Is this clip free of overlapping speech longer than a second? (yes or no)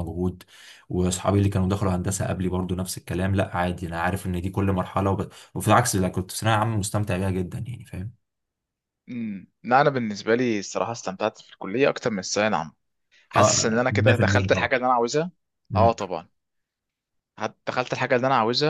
no